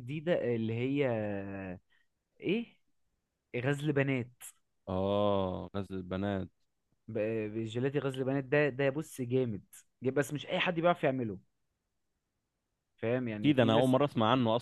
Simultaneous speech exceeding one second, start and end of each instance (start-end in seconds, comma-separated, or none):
none